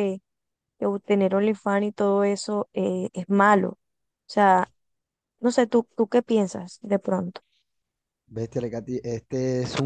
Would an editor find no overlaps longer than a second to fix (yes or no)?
yes